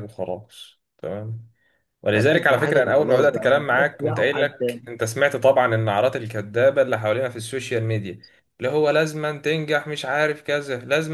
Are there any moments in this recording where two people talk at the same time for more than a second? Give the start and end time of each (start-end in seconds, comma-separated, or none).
2.1-4.8